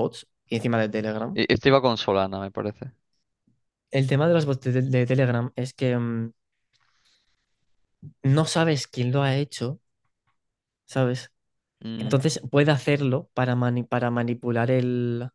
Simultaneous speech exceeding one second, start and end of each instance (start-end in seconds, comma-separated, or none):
none